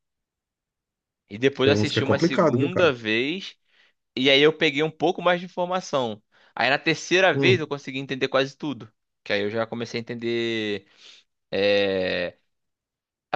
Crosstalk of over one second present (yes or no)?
yes